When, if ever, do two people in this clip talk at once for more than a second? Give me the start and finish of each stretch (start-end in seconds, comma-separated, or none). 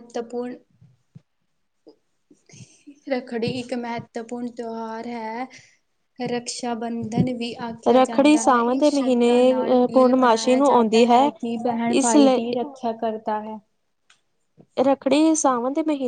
8.0-11.1